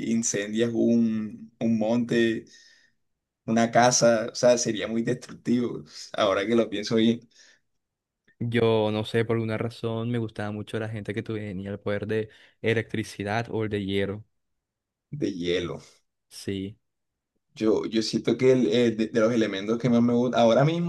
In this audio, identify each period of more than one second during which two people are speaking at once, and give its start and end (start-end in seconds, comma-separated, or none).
none